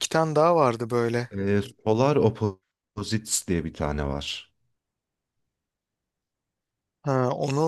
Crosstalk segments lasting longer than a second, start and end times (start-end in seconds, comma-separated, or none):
none